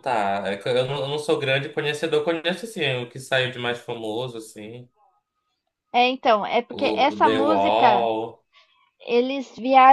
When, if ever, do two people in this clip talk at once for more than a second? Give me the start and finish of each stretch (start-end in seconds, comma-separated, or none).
6.7-8.1